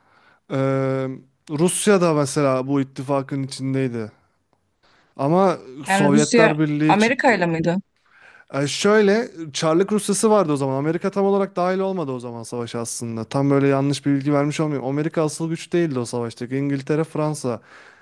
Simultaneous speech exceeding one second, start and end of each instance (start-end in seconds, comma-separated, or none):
5.9-7.4